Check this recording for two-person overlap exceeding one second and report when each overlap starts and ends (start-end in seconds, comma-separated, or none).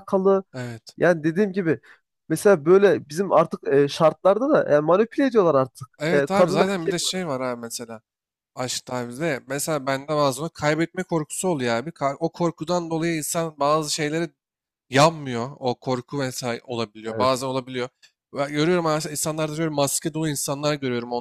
6.0-7.4